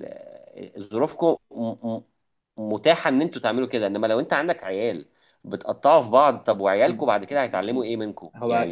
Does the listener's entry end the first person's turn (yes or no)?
yes